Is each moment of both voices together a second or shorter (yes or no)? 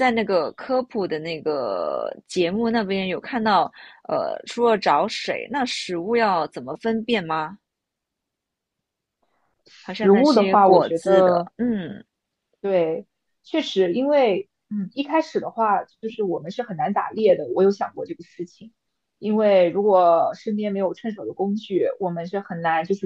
no